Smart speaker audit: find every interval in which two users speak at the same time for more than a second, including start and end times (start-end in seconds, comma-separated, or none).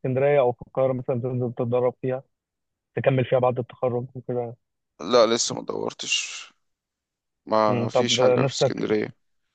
7.7-8.9